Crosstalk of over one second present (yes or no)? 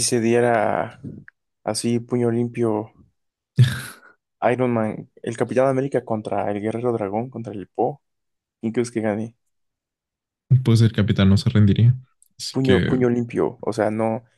no